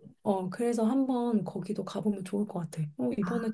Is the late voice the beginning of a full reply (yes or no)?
no